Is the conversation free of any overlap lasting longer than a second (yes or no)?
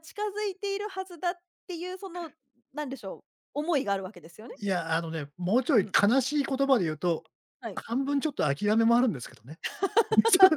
yes